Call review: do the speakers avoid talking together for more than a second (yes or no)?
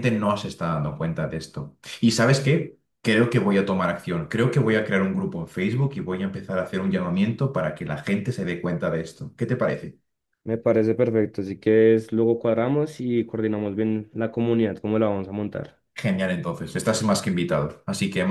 yes